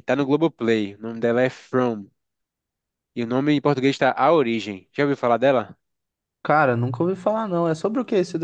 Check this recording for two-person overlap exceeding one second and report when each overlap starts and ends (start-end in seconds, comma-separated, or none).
none